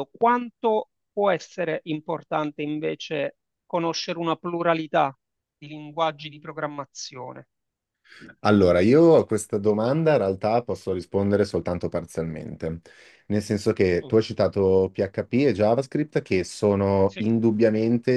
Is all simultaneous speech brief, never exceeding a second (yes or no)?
yes